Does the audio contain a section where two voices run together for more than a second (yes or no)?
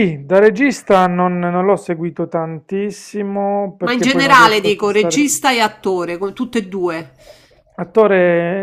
yes